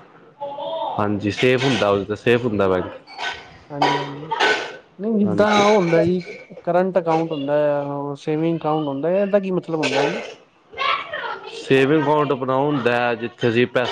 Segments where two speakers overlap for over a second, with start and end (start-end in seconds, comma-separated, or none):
none